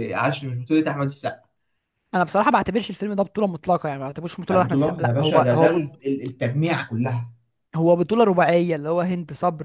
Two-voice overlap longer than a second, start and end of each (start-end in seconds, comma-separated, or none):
4.5-5.8